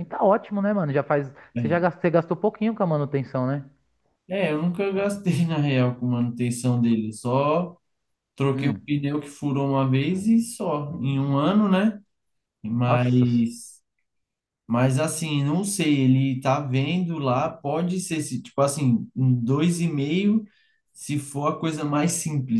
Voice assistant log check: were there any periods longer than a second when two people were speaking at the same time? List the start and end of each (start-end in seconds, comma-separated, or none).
none